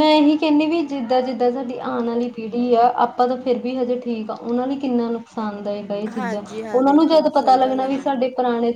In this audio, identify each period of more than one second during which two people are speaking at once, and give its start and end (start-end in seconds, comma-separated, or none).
6.2-8.2